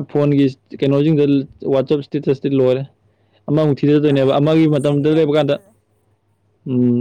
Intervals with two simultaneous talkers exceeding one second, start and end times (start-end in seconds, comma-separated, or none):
4.0-5.5